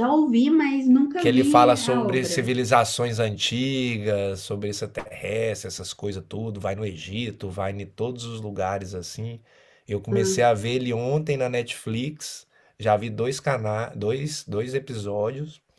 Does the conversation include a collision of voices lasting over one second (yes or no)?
yes